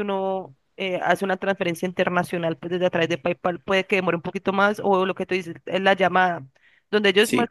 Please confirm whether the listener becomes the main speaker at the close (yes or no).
no